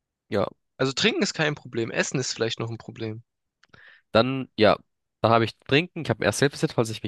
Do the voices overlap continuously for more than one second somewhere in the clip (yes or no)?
no